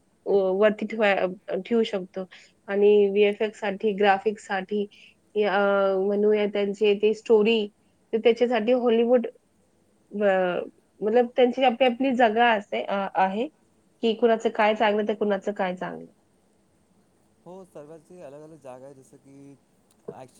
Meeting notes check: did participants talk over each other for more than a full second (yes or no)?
no